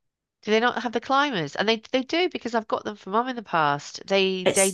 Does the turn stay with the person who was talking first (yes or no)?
no